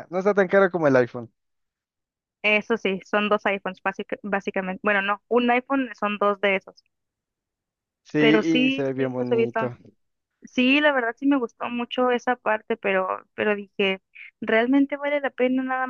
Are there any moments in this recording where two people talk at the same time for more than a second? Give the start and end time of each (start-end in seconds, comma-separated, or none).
8.2-9.6